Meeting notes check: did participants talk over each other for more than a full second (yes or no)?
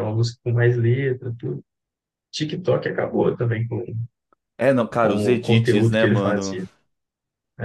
yes